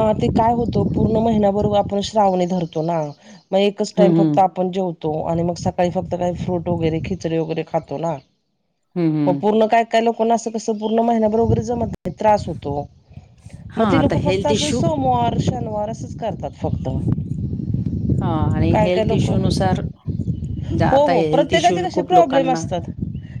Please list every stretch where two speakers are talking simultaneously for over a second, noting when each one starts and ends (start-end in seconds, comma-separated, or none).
20.9-22.6